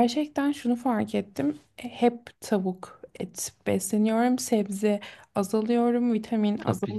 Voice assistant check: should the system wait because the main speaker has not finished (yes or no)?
no